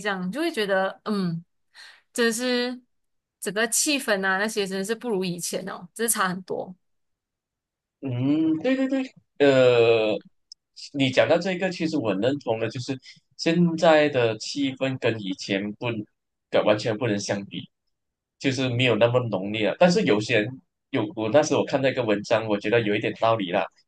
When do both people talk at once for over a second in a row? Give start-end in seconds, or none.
none